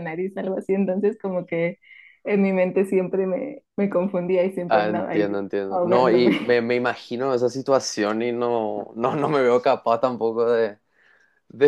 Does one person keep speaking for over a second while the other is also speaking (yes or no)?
yes